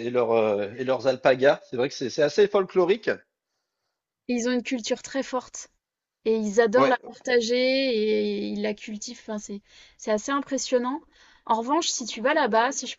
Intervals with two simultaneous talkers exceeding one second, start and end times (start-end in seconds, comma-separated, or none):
none